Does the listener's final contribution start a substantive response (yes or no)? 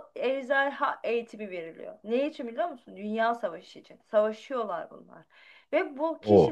no